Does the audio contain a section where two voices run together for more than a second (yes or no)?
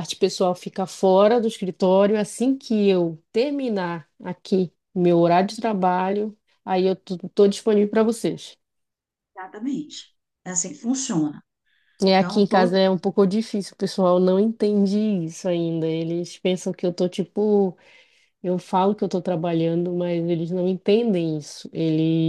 no